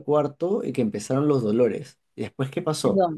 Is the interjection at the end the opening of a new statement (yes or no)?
yes